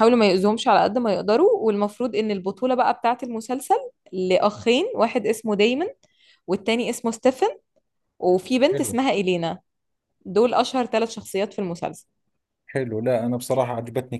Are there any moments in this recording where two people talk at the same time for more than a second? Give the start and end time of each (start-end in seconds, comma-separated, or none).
none